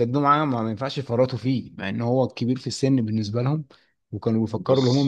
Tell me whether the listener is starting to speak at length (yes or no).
yes